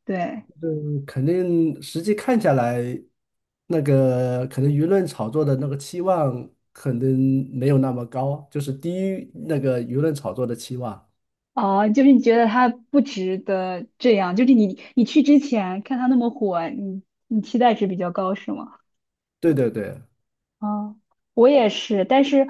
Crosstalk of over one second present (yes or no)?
no